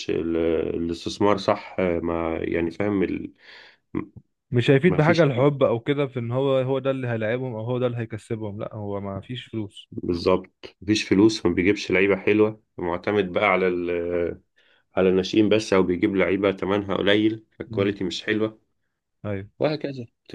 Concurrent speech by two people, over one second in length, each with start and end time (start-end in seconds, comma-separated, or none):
none